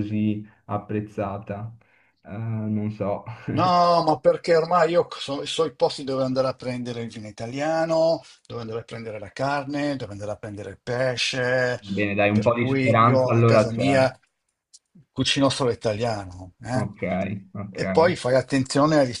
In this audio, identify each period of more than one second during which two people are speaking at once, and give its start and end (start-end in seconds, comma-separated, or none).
12.3-14.0